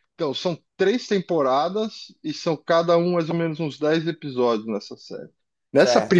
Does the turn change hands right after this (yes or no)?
yes